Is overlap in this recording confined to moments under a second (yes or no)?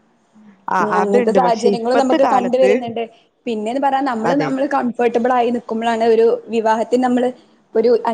no